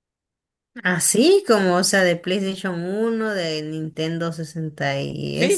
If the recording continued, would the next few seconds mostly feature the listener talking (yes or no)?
yes